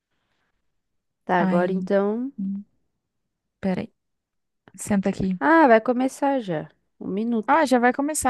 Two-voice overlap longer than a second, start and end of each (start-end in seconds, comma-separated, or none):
none